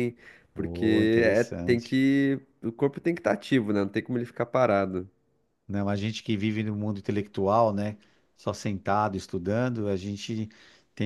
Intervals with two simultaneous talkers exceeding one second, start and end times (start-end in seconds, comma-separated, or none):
0.6-2.0